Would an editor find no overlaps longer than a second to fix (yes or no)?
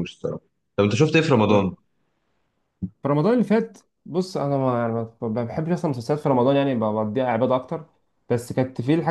yes